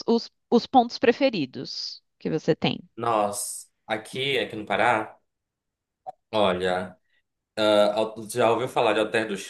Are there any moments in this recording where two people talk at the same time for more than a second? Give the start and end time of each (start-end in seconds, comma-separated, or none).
none